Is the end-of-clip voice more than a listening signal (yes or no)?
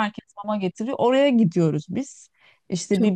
no